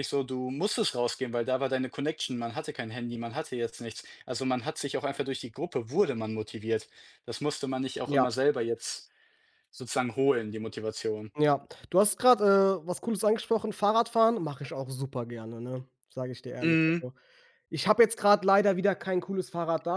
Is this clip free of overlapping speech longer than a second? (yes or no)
yes